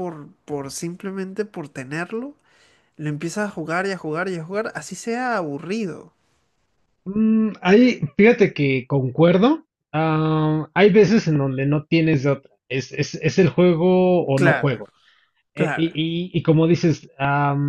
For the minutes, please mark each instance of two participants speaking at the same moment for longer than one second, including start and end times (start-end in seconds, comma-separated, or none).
none